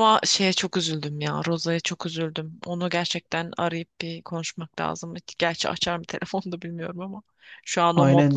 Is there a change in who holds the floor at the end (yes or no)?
yes